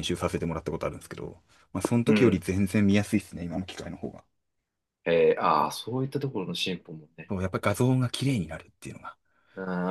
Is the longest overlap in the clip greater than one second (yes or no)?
no